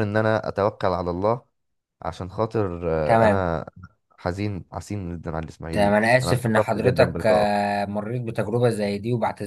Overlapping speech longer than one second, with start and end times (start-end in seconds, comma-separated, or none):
5.7-7.7